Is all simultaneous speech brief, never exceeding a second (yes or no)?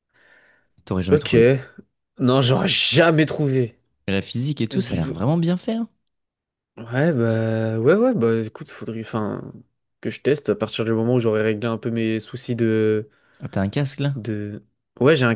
yes